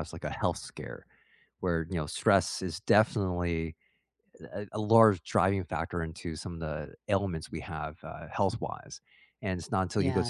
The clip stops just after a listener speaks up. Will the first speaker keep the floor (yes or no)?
yes